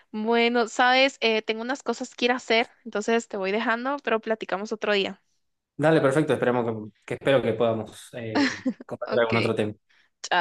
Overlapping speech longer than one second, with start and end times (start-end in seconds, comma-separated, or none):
none